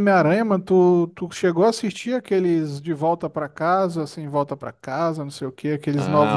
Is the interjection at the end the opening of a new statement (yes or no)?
yes